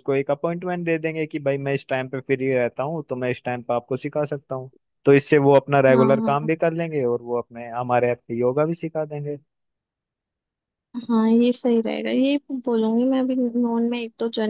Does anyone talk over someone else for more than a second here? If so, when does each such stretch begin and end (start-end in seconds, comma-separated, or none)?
none